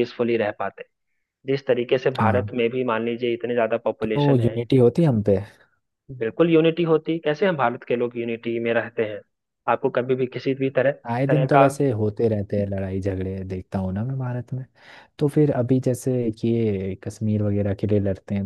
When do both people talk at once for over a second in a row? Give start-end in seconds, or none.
none